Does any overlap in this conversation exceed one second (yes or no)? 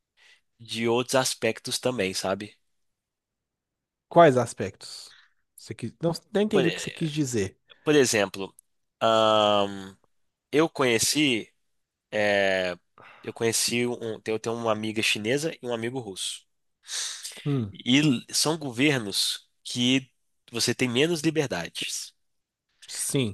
no